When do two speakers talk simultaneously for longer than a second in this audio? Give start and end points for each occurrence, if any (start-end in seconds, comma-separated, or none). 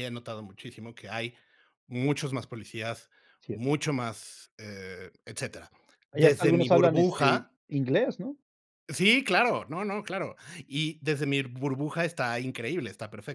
6.1-7.5